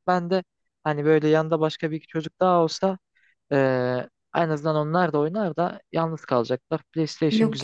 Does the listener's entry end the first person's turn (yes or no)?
yes